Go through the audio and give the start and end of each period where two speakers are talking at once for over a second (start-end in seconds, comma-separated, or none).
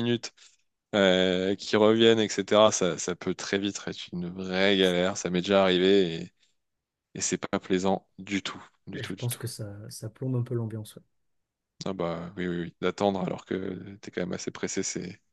none